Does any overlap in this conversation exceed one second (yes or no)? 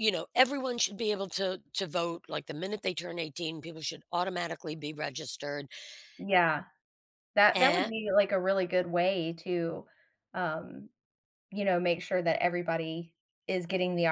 no